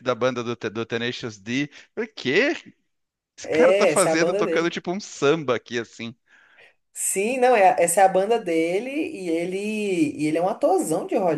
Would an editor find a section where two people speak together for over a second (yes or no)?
yes